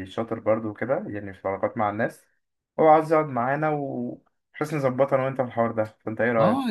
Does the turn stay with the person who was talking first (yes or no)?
no